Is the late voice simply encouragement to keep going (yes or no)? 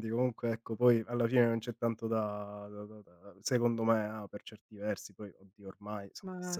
no